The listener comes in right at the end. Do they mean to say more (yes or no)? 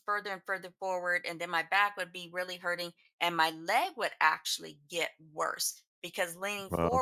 no